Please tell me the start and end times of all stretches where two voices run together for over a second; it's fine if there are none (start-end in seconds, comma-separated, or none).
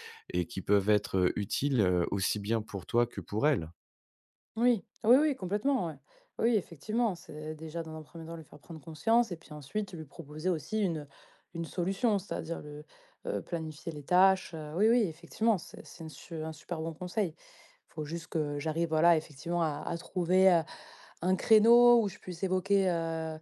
none